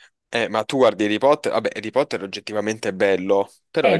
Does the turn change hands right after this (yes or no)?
yes